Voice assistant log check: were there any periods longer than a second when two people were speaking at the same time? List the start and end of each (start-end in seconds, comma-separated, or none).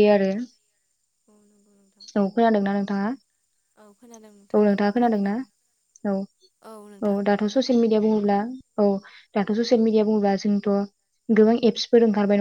4.0-5.3